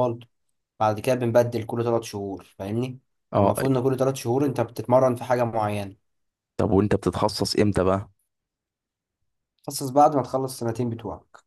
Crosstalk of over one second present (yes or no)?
no